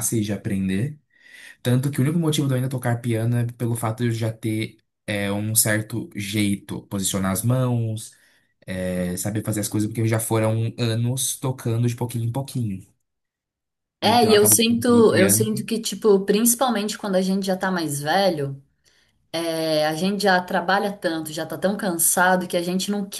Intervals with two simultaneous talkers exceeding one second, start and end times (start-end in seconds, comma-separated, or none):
14.0-15.5